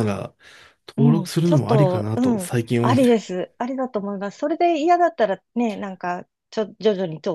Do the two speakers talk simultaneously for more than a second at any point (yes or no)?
yes